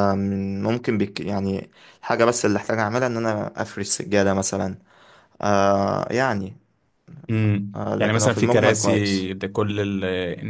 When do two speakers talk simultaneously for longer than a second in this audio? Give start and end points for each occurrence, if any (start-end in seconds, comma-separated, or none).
7.8-9.3